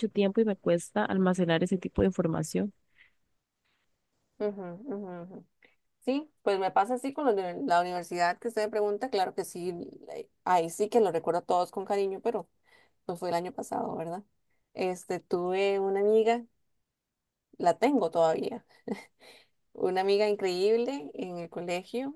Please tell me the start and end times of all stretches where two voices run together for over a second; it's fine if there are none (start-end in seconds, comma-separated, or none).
none